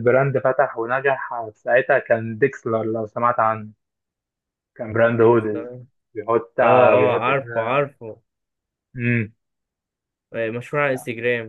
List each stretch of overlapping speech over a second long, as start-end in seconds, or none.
6.6-7.8